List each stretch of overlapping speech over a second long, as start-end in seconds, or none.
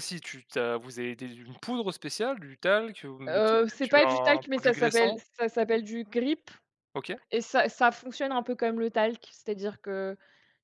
3.3-5.2